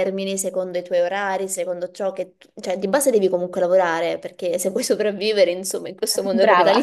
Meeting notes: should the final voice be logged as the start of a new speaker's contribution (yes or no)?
no